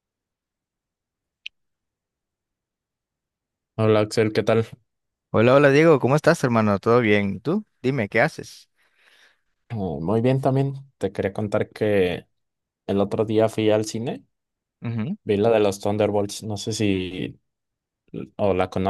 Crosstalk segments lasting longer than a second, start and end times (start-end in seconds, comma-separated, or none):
none